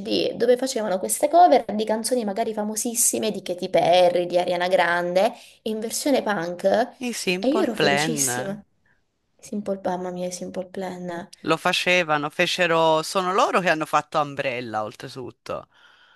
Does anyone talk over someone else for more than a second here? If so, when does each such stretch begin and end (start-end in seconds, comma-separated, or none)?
7.4-8.6